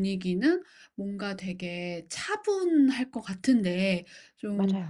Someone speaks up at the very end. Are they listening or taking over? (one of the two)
listening